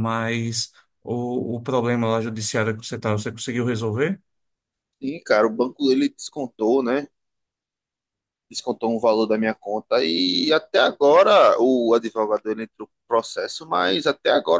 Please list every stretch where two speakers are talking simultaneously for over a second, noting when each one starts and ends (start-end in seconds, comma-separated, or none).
none